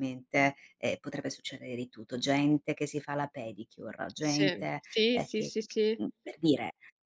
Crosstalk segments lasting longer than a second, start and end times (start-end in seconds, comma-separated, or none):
4.2-6.0